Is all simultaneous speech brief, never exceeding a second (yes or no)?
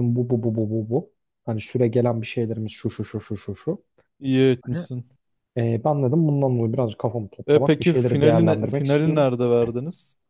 no